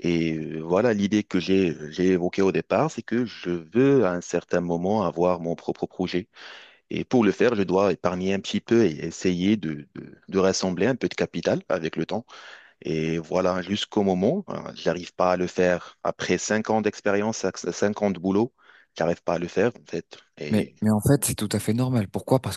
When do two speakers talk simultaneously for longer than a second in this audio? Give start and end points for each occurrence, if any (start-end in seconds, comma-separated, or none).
none